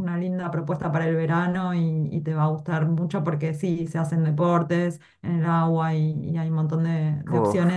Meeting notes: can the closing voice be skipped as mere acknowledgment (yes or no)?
yes